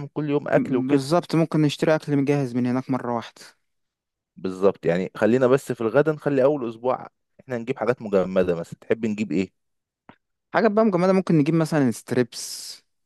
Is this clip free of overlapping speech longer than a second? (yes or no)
yes